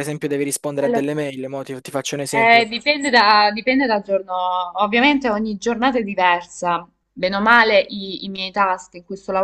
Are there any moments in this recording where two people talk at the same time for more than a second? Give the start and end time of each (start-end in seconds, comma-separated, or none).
none